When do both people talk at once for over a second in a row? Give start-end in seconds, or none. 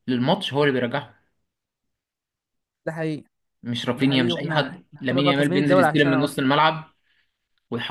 4.0-6.5